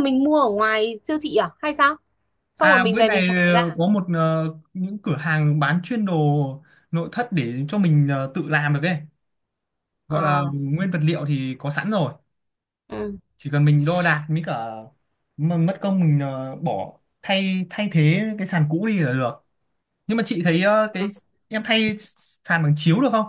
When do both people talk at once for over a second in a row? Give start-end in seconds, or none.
2.6-3.8